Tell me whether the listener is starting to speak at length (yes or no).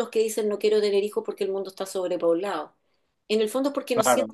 no